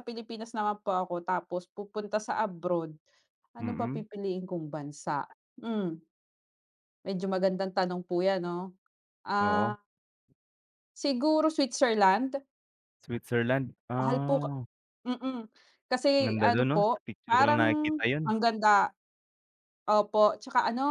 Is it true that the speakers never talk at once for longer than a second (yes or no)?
no